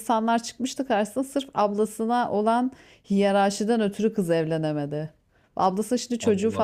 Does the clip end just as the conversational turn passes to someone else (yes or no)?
no